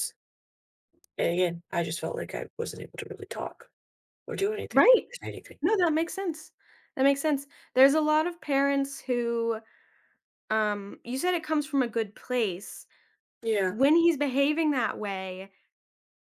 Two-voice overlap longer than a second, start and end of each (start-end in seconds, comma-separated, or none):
none